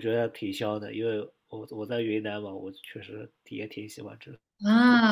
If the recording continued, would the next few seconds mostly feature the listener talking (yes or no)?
yes